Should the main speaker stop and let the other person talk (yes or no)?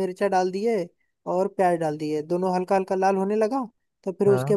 no